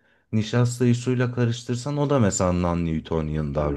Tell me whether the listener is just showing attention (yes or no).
no